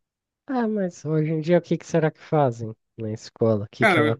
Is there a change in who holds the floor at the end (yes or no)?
yes